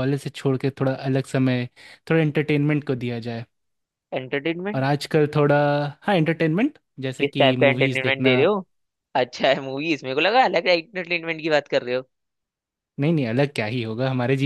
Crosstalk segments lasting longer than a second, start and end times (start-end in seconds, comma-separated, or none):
7.2-8.4